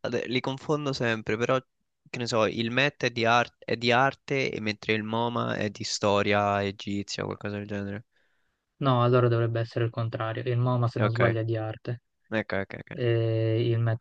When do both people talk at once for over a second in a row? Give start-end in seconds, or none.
none